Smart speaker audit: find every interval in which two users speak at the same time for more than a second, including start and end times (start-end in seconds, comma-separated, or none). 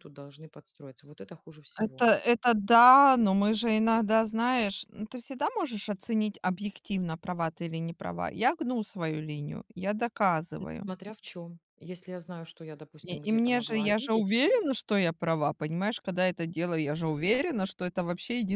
13.0-14.3